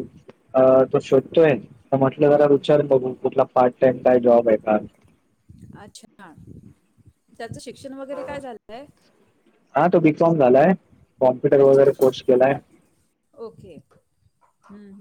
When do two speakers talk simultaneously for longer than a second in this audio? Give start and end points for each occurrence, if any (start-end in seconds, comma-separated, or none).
none